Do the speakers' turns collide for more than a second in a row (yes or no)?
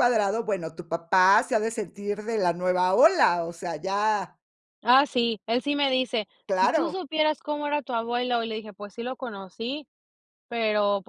no